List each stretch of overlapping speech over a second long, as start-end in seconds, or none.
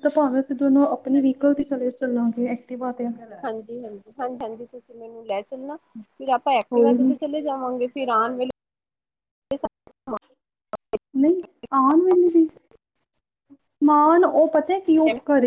none